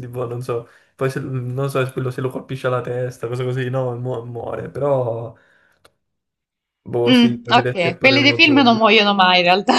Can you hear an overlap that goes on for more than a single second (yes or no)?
yes